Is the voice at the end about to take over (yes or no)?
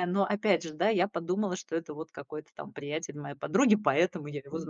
yes